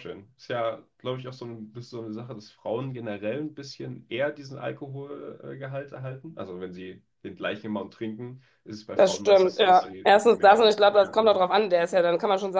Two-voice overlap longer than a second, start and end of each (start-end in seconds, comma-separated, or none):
8.9-11.4